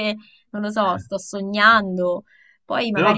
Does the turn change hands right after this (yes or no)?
yes